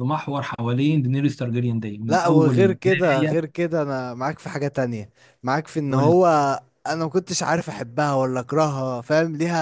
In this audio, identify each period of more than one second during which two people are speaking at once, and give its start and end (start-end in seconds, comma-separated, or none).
2.1-3.4